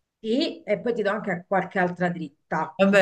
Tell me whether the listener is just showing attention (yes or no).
no